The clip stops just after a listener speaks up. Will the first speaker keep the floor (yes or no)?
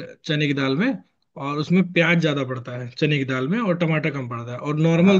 yes